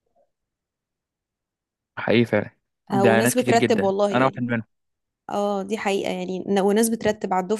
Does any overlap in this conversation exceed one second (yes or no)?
yes